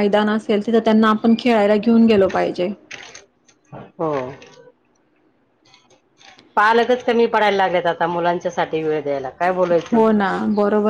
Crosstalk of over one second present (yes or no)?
no